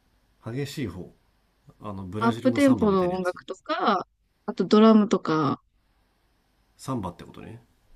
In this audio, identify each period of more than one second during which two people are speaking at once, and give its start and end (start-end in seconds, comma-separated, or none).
2.2-3.4